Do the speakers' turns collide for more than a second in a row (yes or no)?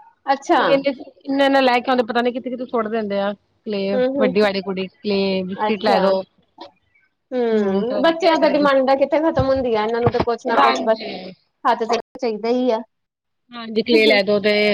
yes